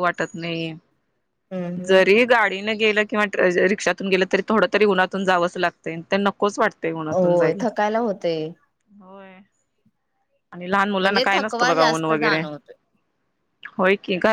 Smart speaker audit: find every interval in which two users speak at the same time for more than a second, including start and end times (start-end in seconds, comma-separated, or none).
11.0-12.4